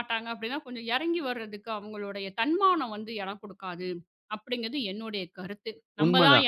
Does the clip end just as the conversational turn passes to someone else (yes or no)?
yes